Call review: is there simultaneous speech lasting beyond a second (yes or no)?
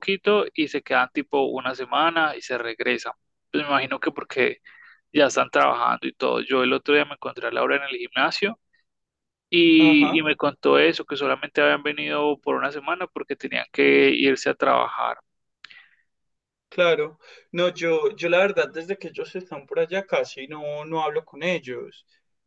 no